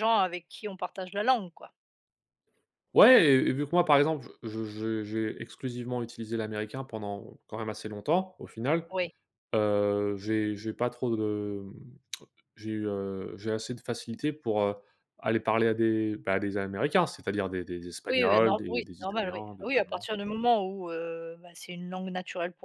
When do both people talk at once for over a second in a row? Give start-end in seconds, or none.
18.1-20.1